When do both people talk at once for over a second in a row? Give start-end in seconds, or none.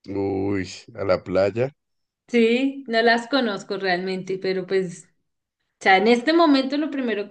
none